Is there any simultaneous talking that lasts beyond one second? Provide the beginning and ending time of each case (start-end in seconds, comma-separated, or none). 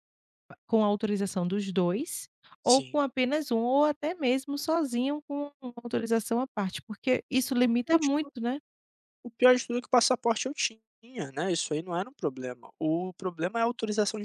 none